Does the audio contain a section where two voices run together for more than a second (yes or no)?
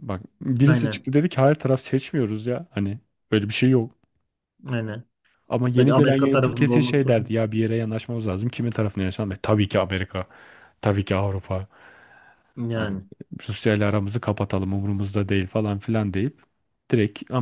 yes